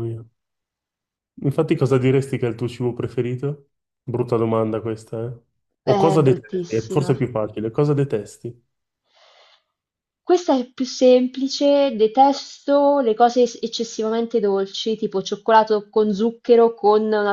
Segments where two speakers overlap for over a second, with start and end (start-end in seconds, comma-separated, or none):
5.8-7.2